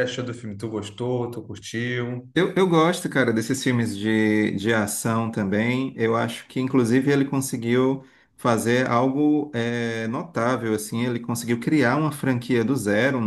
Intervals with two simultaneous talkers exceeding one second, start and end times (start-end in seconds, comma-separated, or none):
none